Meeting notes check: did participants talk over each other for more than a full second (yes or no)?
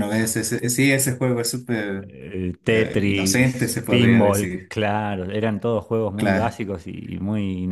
yes